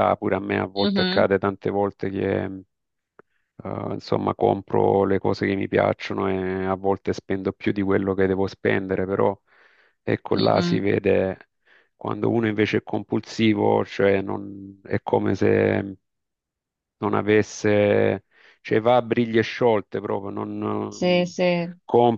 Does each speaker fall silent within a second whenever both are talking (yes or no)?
yes